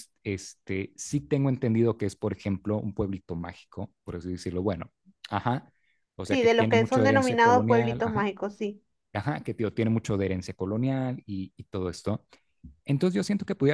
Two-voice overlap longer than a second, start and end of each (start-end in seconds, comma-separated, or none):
6.2-8.3